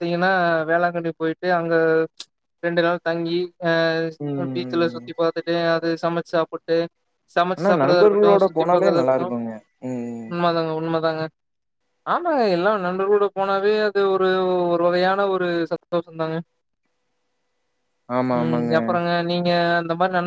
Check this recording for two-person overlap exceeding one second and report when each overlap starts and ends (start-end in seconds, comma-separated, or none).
7.6-9.3